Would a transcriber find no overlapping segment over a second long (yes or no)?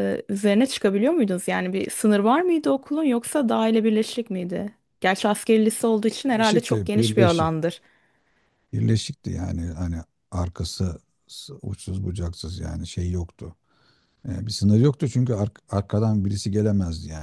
no